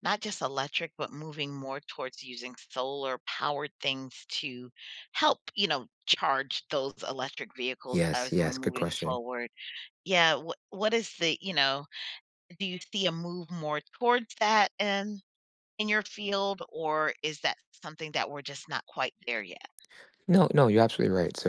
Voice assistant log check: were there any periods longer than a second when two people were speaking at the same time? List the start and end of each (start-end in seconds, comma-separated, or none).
7.9-9.2